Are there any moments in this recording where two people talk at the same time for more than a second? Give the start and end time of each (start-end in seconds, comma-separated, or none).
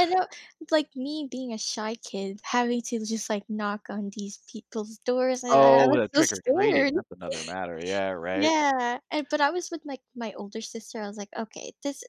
5.5-6.9